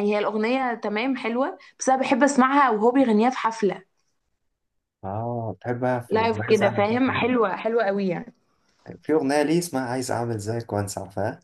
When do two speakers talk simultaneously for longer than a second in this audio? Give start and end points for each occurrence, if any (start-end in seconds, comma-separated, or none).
6.1-7.3